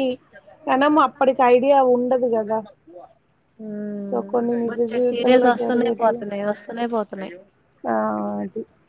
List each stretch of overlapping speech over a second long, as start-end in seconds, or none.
4.7-6.2